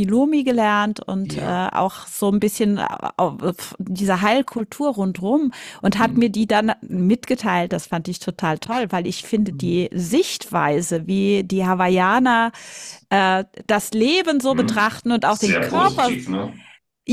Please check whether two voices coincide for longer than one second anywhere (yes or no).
yes